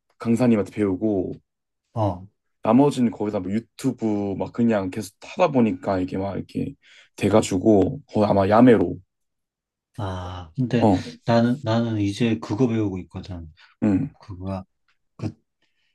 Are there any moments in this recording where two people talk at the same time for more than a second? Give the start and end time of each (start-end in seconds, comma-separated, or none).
none